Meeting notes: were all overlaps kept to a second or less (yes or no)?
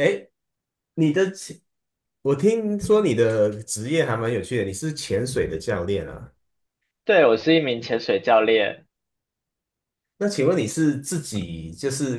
yes